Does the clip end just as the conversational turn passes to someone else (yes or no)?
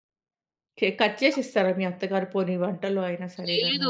yes